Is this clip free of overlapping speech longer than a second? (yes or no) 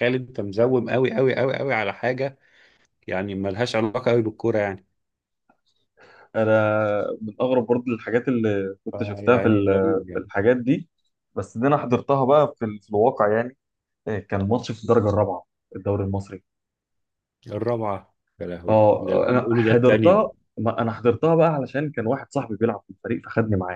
no